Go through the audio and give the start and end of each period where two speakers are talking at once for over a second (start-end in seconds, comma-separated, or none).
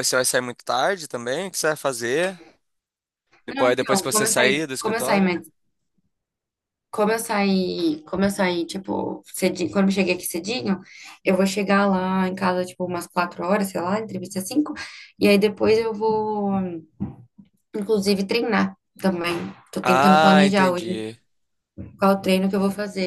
3.5-5.4, 19.8-21.1